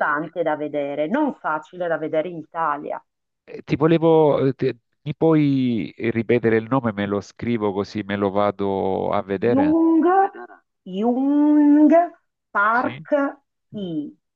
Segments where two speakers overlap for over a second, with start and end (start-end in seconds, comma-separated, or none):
none